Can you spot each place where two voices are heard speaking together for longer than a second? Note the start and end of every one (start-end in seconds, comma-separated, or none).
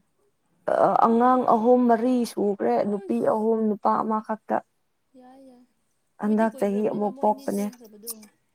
6.2-7.7